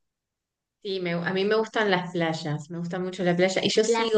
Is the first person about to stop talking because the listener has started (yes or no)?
no